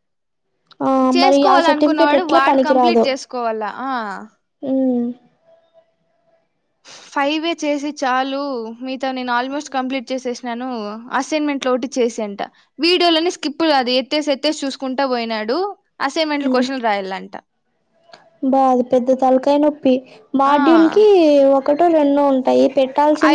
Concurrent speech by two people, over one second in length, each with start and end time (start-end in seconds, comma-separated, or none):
1.1-3.0